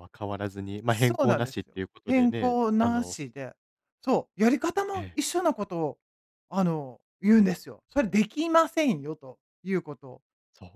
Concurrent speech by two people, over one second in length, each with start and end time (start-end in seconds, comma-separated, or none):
0.9-3.1